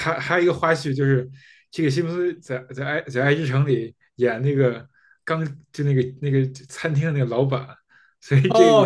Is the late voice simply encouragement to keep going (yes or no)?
no